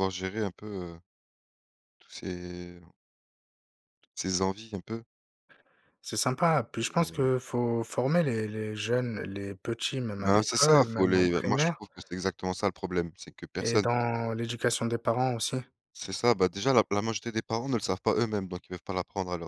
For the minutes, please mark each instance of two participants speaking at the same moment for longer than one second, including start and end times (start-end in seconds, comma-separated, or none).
10.2-11.8